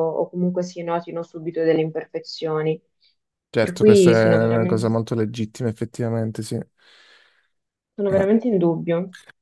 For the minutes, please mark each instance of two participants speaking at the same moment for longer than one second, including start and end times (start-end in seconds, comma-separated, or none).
3.6-4.8